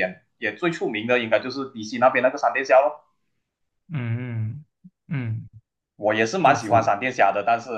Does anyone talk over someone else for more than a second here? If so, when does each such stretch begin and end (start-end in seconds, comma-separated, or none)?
none